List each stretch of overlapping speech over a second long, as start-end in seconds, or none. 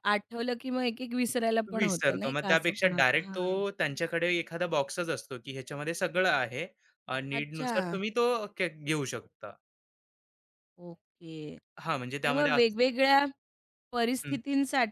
1.8-3.6